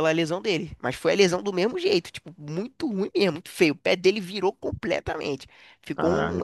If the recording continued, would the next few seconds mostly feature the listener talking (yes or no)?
yes